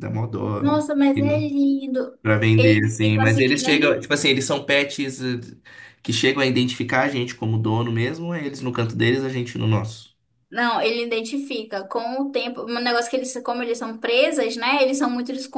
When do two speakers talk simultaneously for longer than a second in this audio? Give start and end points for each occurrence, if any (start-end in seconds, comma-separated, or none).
2.6-4.0